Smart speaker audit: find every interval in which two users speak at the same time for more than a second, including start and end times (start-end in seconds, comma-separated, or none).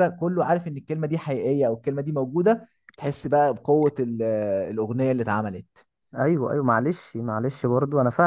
none